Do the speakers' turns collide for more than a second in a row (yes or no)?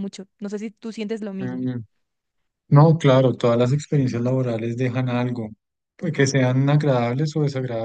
no